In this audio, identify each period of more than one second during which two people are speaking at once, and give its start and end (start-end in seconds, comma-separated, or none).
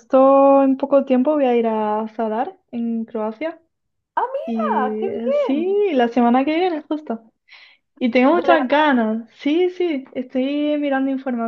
4.5-5.8